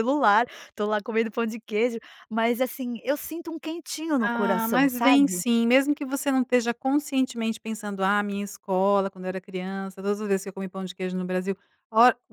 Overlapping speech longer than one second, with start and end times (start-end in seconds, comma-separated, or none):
4.2-5.4